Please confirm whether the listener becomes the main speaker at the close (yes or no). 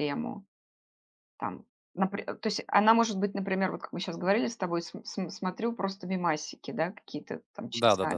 yes